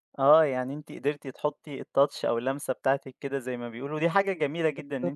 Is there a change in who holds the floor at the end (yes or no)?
no